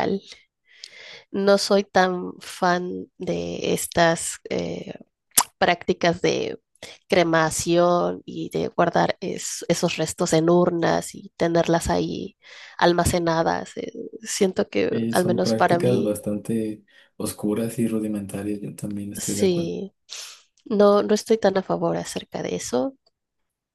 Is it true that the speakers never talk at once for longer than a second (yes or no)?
no